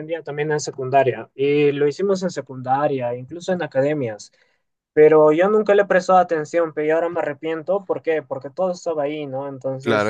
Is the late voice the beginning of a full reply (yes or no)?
yes